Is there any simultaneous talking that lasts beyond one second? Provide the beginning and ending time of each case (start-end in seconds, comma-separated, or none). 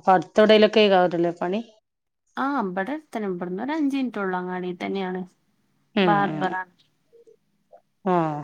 none